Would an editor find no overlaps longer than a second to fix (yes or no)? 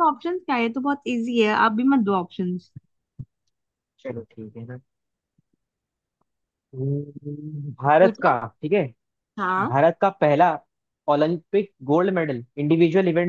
yes